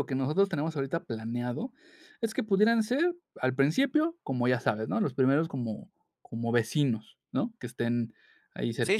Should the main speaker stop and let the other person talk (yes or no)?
yes